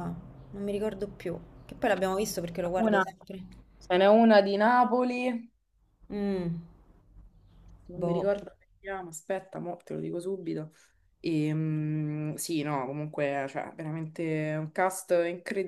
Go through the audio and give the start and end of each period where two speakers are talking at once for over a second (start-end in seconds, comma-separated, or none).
none